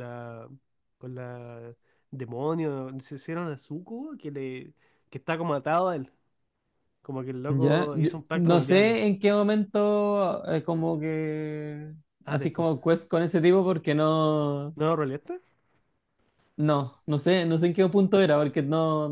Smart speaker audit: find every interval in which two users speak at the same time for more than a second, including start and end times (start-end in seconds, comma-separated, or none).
7.5-9.0